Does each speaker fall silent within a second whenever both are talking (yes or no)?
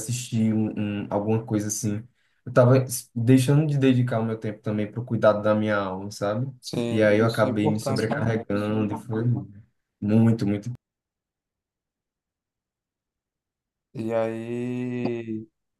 no